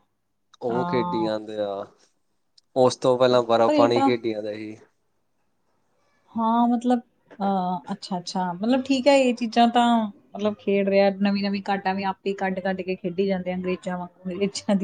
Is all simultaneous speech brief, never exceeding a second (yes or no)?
yes